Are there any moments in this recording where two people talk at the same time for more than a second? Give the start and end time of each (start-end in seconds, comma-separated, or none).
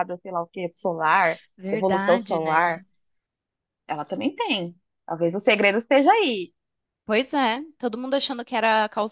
1.6-2.8